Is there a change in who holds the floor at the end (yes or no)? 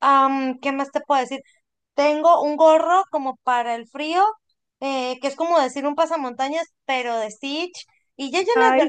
no